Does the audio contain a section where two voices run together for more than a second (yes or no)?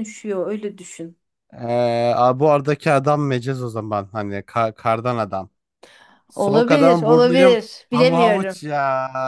yes